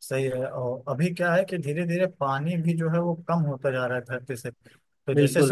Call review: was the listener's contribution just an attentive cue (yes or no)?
yes